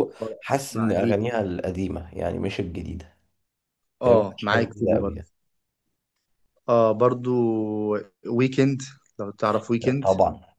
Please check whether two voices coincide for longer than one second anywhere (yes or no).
yes